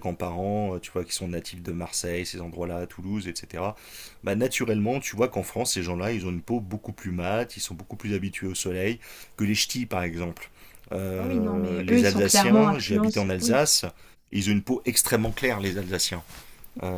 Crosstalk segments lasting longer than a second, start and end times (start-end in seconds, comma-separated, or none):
11.2-13.6